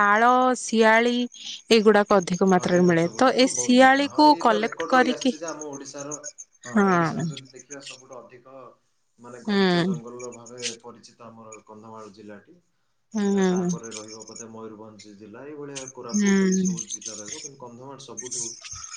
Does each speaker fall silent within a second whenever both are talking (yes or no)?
no